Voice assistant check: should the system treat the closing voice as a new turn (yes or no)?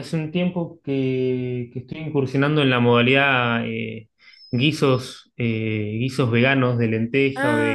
no